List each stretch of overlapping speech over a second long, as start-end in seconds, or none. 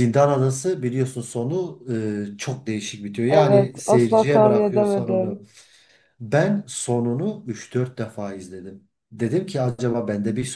3.3-5.4